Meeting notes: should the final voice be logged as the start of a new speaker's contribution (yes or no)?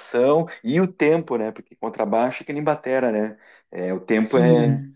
yes